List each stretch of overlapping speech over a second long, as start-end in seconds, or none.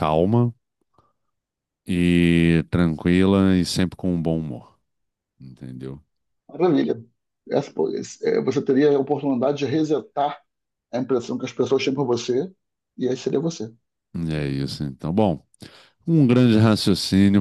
none